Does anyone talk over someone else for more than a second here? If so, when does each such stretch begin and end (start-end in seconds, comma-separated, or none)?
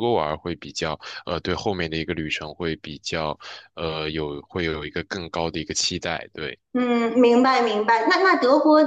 none